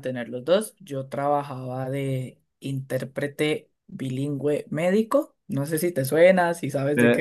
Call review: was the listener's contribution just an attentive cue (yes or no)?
no